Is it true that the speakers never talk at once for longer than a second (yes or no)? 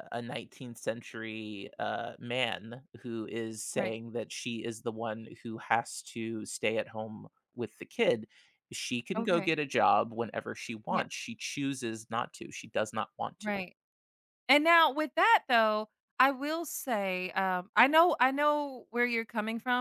yes